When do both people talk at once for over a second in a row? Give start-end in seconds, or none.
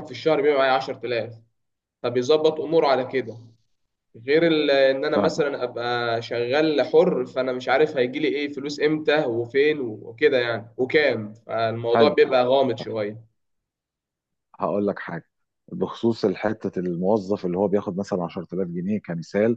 none